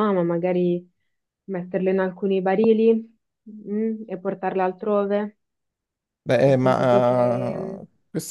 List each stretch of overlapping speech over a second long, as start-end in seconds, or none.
6.4-7.8